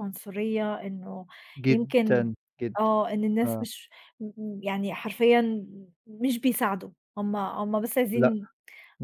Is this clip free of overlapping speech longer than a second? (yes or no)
yes